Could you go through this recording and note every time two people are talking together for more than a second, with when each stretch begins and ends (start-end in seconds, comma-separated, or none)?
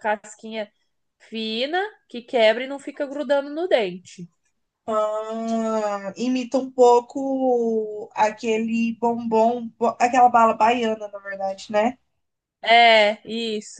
none